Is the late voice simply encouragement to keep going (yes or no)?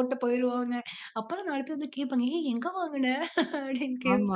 no